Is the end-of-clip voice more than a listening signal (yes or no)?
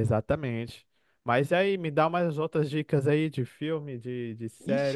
yes